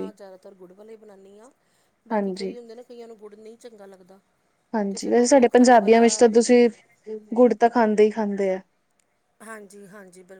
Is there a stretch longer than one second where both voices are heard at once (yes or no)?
yes